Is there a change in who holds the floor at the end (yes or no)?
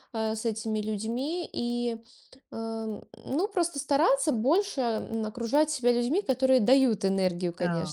no